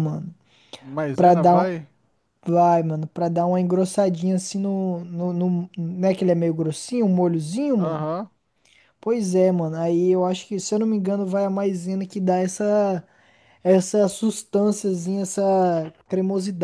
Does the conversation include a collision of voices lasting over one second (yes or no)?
no